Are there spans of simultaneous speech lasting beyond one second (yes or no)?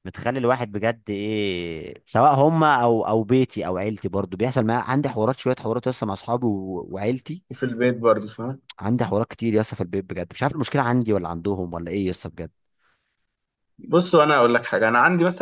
no